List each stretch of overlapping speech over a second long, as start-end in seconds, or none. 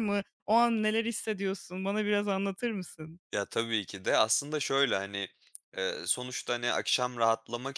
none